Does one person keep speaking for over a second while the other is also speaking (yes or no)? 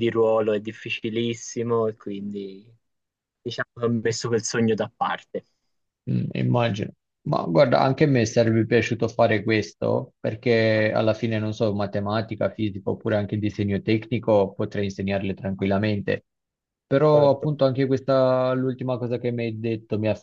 no